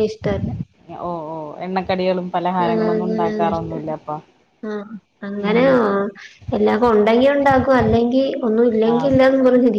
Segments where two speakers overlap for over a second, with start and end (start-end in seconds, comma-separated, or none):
2.7-3.9